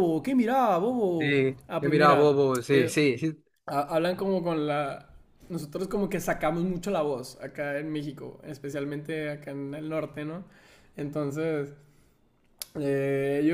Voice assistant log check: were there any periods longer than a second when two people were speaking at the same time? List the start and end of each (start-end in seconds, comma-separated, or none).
1.2-3.0